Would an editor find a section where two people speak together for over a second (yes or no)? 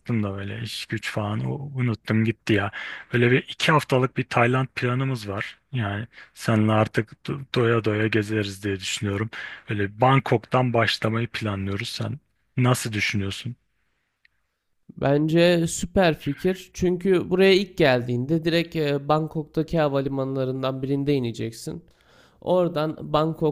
no